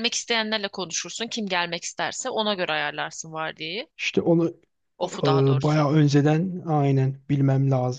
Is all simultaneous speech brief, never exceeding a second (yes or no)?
yes